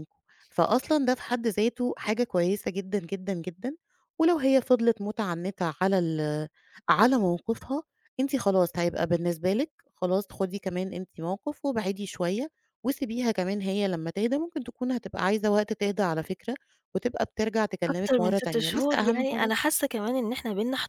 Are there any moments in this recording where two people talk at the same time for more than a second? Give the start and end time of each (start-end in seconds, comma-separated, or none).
17.9-19.5